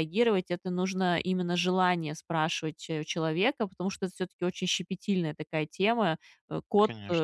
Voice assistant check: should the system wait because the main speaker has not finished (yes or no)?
yes